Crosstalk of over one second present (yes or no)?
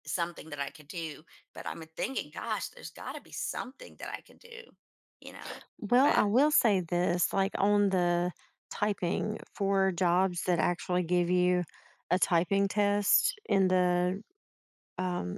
no